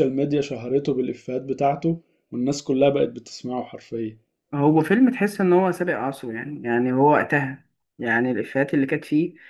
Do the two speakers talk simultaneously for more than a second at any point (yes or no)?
no